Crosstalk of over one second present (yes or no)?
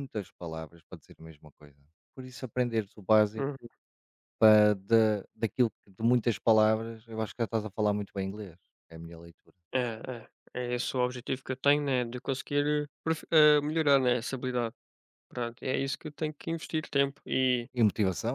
no